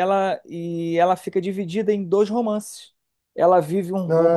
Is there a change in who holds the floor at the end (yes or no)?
no